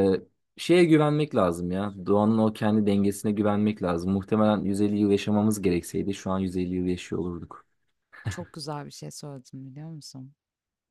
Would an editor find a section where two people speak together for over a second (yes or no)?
no